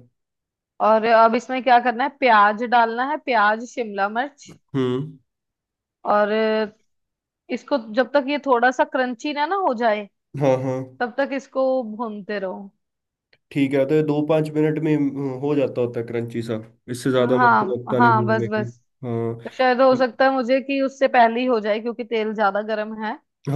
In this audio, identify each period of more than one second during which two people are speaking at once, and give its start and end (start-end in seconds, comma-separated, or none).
17.2-18.6